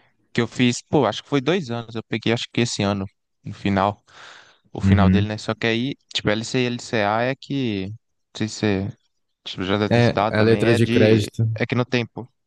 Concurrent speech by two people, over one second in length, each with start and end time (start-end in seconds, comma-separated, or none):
9.9-11.5